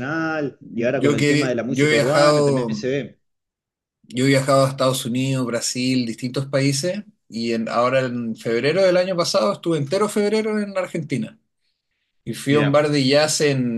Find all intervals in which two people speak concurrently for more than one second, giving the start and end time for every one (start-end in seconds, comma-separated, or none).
1.0-2.9